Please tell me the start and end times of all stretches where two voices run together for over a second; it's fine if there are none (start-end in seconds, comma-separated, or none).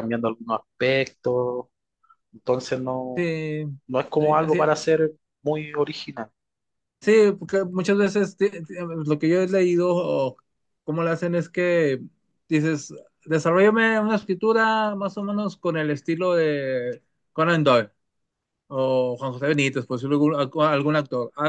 none